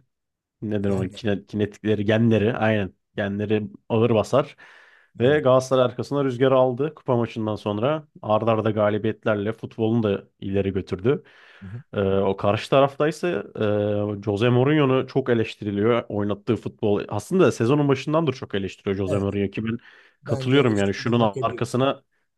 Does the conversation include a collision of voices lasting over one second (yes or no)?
yes